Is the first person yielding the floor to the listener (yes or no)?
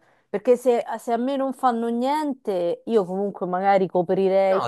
yes